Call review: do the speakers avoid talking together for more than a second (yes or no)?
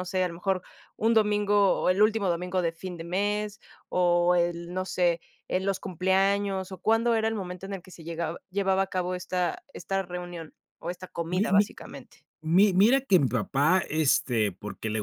yes